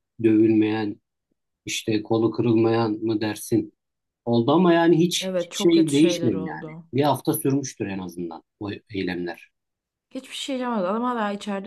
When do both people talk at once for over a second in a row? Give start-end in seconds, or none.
5.2-6.9